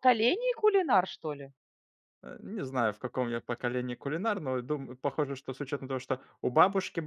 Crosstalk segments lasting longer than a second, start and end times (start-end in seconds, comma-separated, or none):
none